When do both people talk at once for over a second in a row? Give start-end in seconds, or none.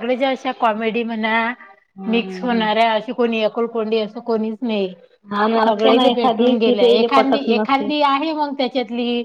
5.6-7.9